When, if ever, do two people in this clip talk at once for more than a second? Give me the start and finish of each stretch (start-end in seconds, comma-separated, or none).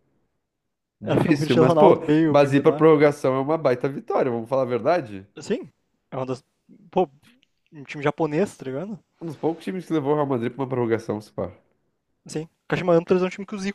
1.1-2.9